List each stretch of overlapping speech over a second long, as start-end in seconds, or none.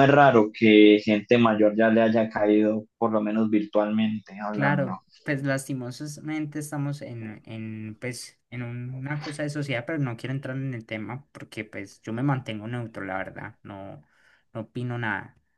none